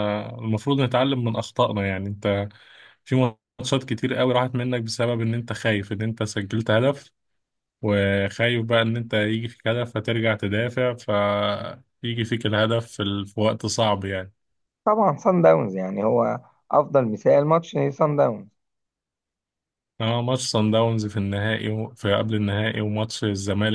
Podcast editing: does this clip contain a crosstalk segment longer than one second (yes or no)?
no